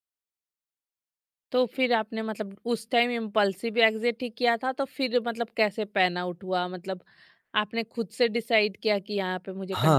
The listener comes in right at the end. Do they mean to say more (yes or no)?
yes